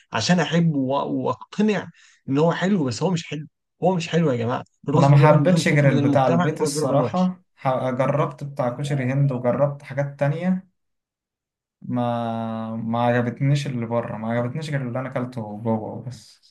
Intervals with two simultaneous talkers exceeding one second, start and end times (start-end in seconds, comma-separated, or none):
5.0-7.3